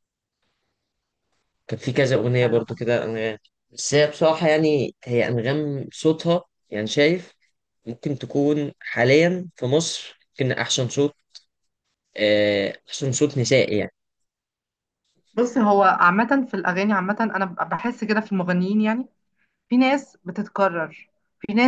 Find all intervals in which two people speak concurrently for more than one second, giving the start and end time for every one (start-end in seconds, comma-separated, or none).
none